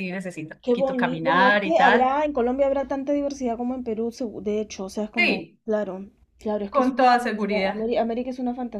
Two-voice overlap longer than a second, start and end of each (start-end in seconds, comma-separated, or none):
0.6-2.2, 6.7-7.9